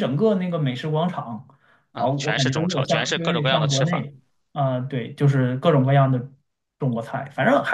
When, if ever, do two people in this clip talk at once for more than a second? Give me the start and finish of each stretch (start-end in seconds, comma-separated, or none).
2.0-4.1